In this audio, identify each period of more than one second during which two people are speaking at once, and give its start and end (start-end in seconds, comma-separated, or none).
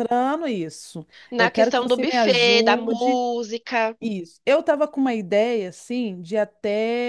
1.3-3.2